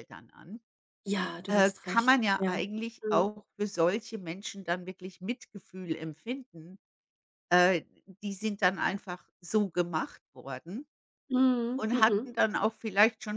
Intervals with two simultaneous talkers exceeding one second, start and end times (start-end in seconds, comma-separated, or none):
1.5-3.3